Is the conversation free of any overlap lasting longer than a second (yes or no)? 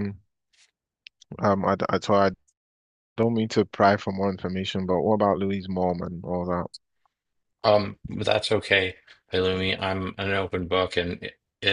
yes